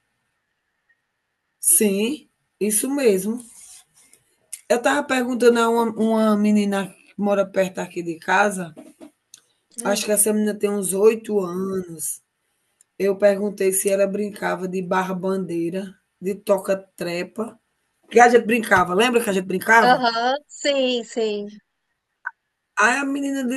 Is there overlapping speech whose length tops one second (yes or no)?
no